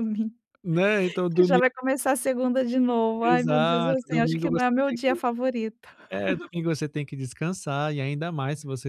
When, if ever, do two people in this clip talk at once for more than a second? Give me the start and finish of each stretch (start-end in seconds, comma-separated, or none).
3.2-5.1